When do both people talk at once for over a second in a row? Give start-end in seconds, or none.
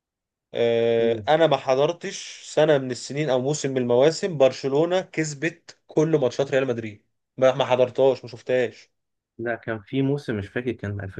none